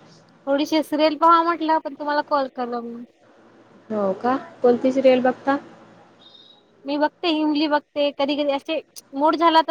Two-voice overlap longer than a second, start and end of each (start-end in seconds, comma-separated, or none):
none